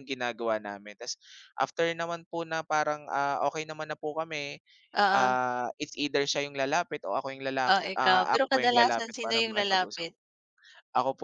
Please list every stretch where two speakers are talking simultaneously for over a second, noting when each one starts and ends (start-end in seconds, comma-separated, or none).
7.7-10.1